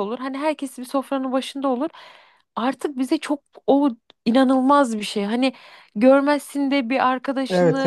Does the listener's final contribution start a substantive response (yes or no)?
no